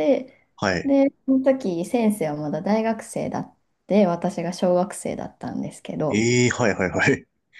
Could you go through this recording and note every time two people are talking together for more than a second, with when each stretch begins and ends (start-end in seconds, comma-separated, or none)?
none